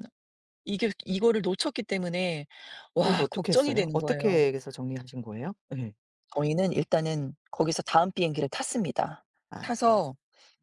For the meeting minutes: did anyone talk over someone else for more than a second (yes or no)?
yes